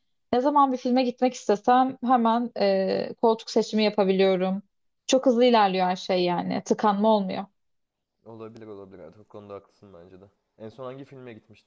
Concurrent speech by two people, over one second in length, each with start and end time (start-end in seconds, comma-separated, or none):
none